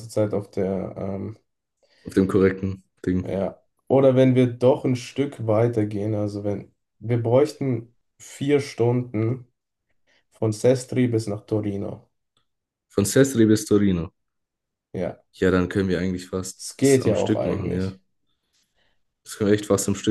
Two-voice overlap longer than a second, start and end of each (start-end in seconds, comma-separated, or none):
16.6-18.0